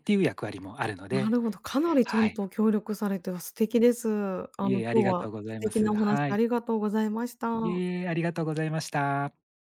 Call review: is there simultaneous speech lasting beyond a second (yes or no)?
yes